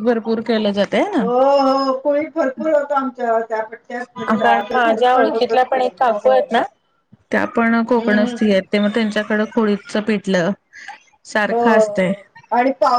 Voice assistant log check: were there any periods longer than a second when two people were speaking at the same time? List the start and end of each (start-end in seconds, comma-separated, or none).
4.3-6.3